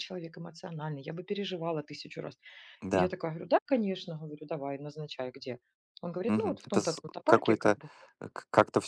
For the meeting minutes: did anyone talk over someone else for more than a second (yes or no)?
yes